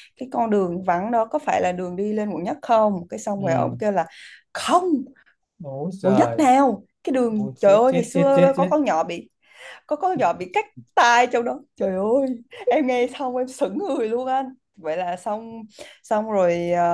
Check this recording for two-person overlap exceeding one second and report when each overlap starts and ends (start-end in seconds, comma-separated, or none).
7.3-8.7